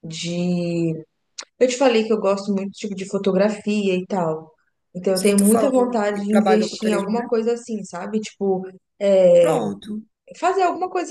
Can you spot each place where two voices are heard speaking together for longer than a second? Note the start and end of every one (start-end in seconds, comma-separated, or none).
5.1-7.3